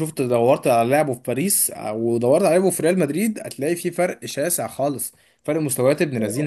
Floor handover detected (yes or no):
no